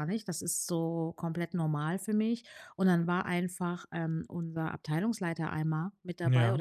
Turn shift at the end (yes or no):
no